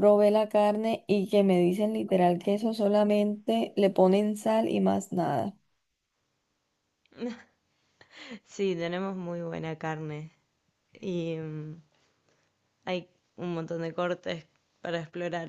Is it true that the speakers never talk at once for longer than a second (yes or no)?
yes